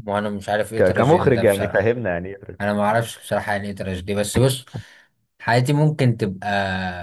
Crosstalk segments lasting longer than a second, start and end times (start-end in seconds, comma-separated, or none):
0.8-2.0